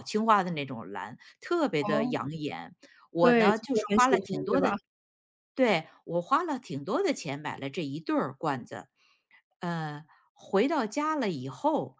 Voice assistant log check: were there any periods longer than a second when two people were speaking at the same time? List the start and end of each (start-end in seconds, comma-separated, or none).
3.2-4.7